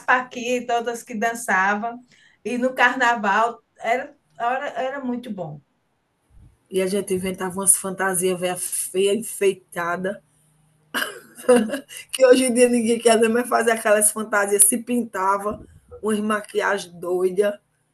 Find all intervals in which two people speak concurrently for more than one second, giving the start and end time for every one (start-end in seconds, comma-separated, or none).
none